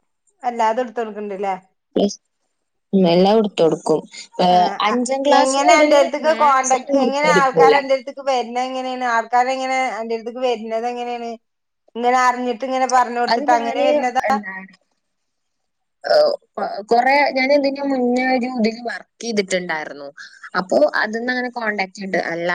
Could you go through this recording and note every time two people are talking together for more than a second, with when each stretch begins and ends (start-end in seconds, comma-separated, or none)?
6.3-7.8